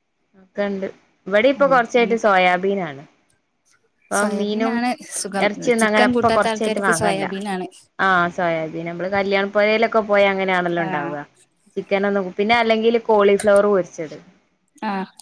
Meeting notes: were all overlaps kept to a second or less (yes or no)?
no